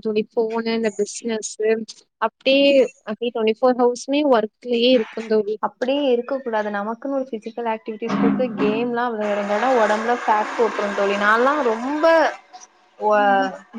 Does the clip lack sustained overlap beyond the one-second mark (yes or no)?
yes